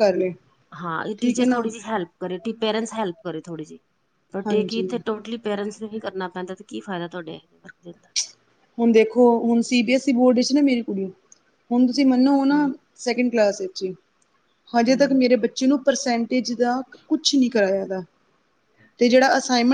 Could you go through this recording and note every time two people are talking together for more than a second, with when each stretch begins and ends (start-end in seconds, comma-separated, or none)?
none